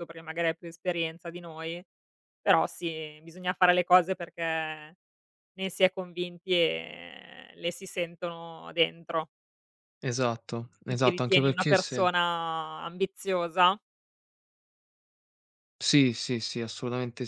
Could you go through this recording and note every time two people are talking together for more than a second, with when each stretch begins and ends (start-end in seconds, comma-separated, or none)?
10.8-12.1